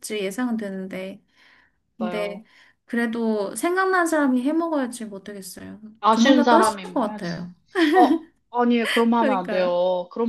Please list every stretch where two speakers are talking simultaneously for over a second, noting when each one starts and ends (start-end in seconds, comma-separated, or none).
6.0-7.3